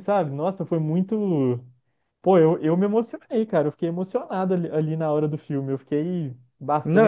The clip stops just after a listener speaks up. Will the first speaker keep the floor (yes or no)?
no